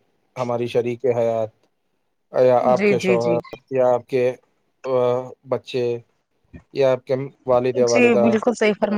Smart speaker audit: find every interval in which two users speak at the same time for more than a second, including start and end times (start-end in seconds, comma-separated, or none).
none